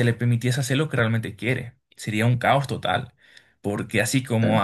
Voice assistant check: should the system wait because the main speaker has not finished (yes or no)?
yes